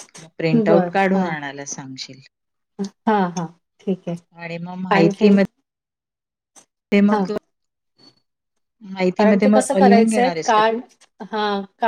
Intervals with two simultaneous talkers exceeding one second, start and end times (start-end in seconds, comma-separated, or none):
9.2-10.8